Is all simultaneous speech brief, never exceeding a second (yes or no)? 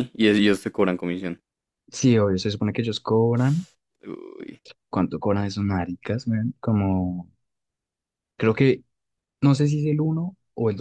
yes